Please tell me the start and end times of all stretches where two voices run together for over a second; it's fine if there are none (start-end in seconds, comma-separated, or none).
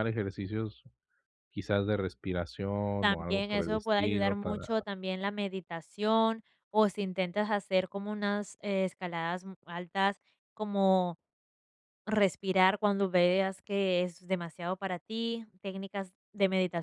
3.1-4.8